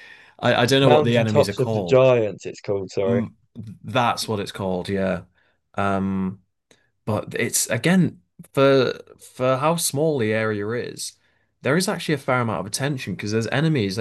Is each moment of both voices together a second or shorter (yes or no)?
no